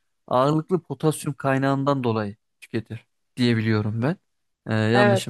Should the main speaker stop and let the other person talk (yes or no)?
yes